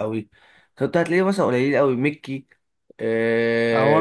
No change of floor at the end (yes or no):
no